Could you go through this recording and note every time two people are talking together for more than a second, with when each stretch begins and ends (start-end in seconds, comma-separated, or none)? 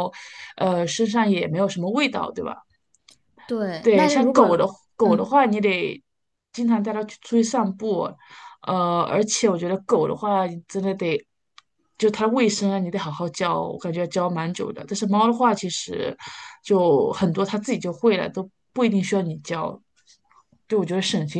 3.8-5.4